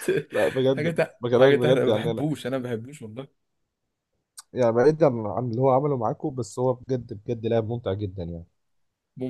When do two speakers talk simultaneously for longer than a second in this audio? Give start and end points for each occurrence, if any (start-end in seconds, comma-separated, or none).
0.8-2.2